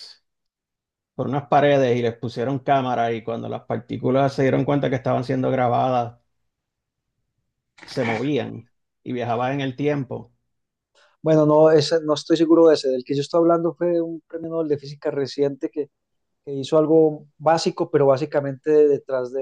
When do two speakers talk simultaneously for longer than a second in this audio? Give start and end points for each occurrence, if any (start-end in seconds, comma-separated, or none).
none